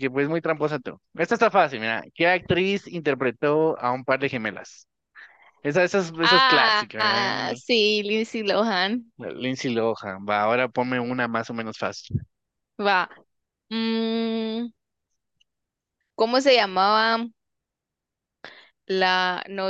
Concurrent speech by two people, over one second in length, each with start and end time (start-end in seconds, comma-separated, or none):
6.2-7.6